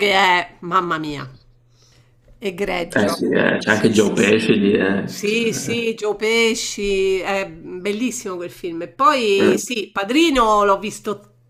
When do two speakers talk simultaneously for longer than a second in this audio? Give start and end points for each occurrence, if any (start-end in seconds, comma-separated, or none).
2.9-4.3